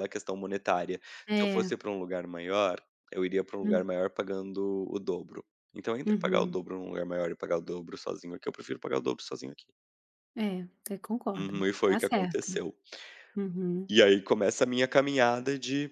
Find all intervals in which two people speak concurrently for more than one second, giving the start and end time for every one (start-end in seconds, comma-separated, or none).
11.4-12.7